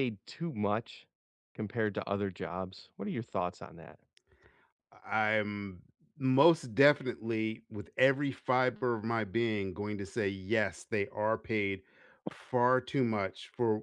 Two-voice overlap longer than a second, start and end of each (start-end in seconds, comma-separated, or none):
none